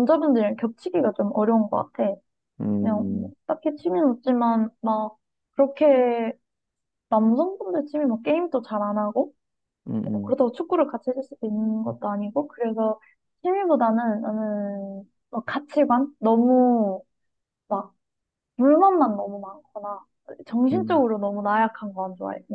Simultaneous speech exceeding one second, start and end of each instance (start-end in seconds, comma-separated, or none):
none